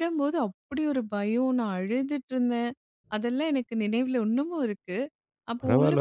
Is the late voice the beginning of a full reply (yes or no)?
yes